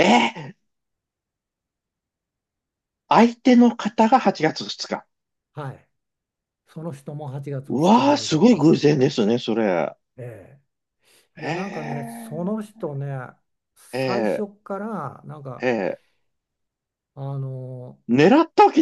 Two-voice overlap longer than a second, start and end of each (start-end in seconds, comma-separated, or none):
7.7-9.0, 11.4-12.8